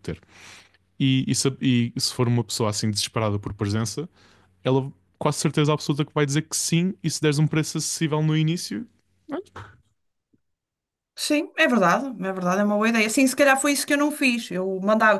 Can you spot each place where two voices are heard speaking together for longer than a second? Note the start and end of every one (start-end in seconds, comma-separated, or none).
none